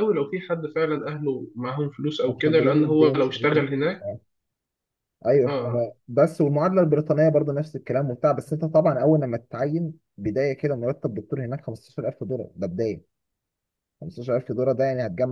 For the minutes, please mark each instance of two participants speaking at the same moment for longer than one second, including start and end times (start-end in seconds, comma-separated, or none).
2.3-3.6